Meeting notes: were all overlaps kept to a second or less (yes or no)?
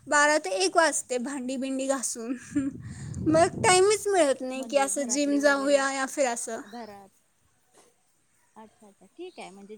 no